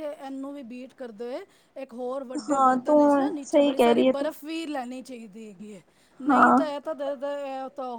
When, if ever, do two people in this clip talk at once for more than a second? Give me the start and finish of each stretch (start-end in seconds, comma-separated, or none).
2.5-4.3